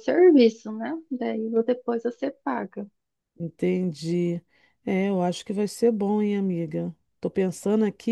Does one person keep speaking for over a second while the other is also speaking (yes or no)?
no